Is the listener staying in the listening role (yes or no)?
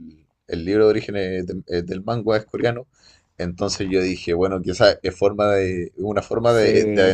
yes